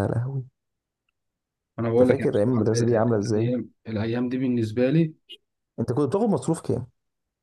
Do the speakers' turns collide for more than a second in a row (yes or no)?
yes